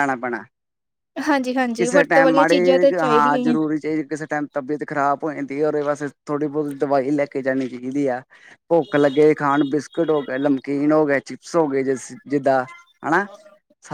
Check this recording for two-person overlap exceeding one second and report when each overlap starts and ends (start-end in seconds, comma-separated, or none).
1.8-3.5